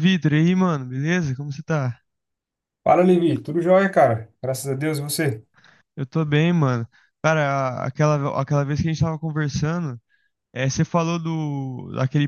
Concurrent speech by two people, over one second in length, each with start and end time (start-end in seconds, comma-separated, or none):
none